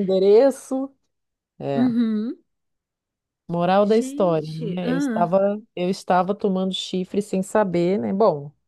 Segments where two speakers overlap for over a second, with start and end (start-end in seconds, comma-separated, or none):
3.8-5.3